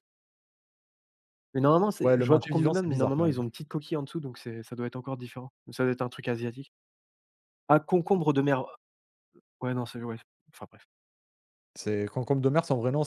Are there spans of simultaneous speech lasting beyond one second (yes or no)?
yes